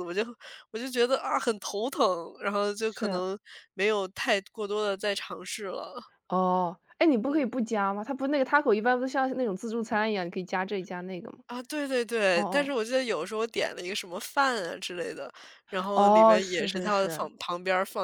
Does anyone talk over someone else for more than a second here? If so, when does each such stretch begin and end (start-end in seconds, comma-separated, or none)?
15.9-17.3